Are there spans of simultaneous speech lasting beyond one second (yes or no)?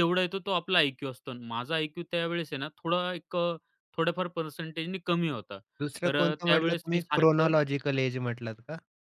yes